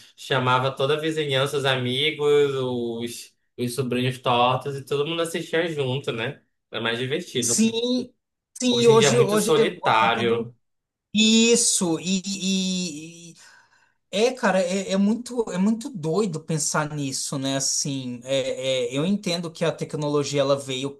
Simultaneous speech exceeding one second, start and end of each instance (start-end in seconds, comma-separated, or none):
8.7-10.5